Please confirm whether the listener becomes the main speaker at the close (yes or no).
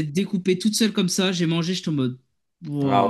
yes